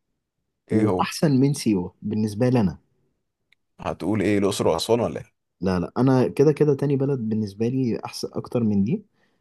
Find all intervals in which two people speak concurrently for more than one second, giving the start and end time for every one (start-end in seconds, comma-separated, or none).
none